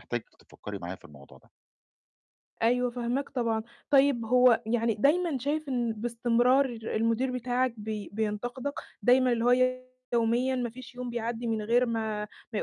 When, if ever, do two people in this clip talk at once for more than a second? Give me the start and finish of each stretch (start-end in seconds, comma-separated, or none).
none